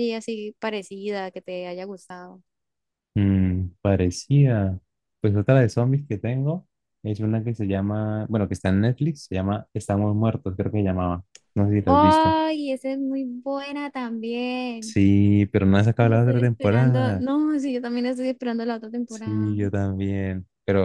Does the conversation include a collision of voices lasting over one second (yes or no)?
yes